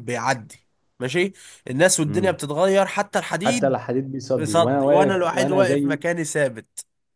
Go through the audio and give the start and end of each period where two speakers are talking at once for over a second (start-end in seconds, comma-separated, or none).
4.4-6.0